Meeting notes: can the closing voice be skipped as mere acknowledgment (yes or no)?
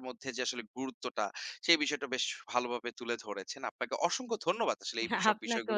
no